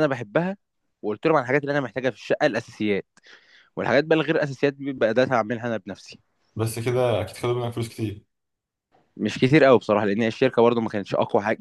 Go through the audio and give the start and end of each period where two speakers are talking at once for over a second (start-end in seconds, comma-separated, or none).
none